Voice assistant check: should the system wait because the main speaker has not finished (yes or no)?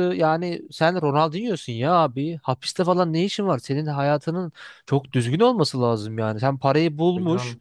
yes